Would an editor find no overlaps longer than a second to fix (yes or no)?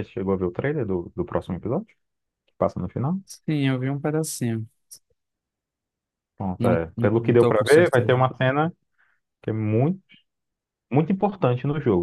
no